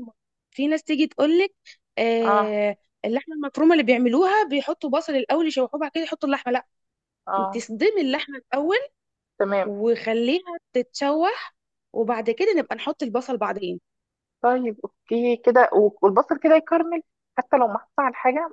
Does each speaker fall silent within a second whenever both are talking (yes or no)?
yes